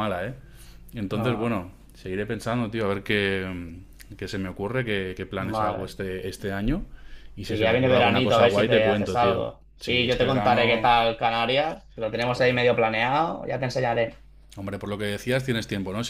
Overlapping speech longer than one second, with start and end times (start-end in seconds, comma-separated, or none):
7.5-10.9